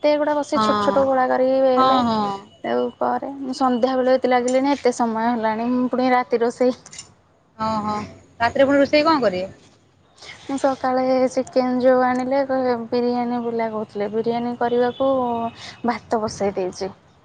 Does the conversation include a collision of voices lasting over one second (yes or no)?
no